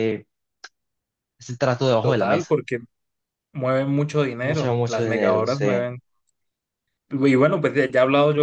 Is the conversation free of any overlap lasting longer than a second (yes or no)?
no